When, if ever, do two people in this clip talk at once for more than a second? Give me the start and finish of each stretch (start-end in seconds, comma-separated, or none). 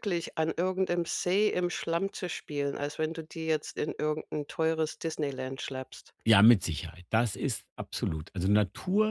none